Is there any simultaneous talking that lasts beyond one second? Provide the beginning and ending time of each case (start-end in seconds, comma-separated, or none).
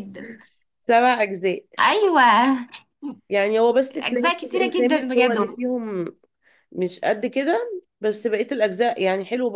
4.0-5.4